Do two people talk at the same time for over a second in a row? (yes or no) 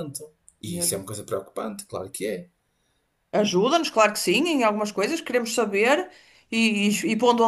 no